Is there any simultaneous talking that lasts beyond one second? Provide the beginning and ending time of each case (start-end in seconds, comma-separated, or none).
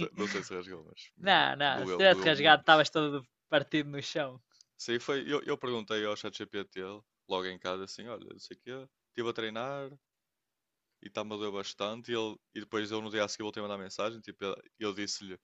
1.2-2.7